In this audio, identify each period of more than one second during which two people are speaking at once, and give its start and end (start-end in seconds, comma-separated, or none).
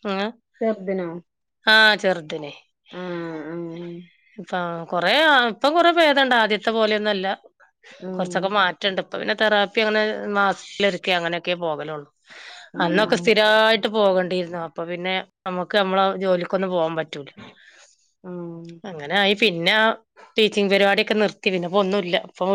none